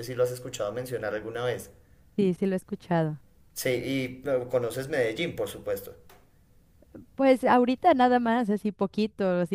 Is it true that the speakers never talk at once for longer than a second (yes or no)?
yes